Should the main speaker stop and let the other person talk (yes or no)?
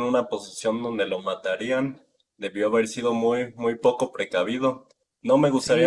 yes